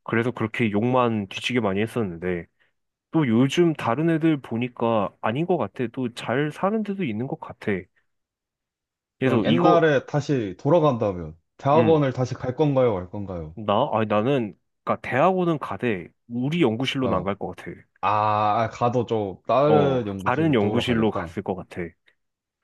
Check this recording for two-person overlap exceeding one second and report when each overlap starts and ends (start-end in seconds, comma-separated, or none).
19.6-21.4